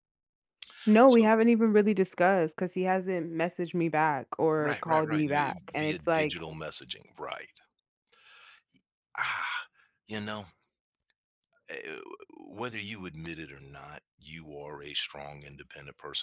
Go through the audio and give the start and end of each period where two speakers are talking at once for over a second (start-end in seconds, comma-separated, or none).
4.6-6.4